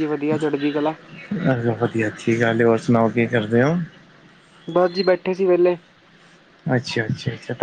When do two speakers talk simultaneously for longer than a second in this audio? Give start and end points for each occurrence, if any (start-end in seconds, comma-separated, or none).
none